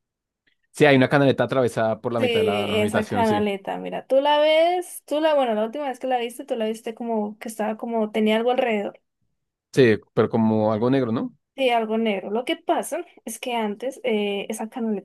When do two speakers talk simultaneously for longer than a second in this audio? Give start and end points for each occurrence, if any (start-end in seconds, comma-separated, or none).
2.2-3.5